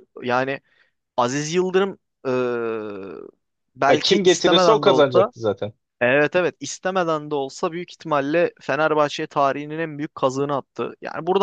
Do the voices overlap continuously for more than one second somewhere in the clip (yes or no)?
yes